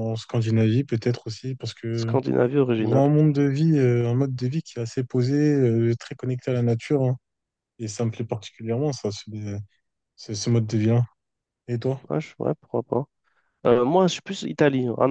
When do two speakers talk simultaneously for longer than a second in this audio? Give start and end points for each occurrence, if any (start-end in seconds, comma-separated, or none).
none